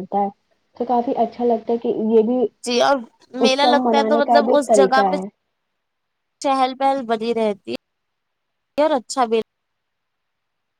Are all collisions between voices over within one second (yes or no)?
no